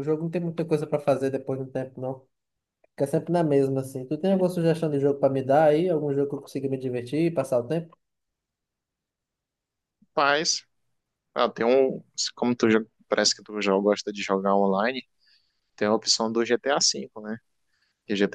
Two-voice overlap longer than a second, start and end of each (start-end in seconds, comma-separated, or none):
none